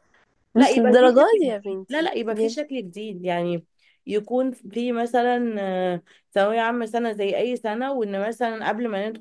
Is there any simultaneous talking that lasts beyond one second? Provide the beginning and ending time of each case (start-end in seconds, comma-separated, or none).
0.6-2.5